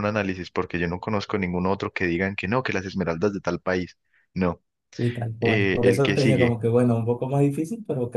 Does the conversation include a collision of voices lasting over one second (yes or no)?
yes